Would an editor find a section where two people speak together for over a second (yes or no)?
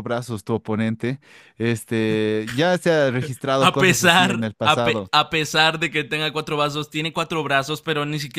yes